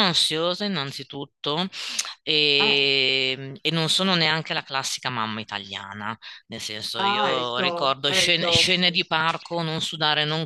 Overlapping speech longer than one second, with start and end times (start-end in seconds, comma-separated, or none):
7.0-8.9